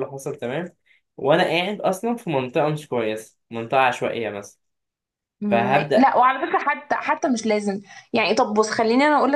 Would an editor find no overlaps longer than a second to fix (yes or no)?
yes